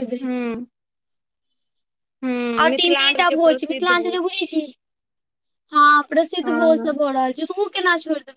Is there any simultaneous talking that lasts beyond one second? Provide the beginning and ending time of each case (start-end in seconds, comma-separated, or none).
2.7-4.3